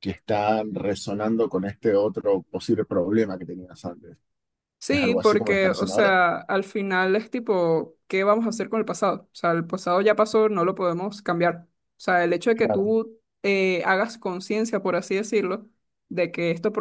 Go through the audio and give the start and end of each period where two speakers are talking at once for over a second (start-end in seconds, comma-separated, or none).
4.9-6.2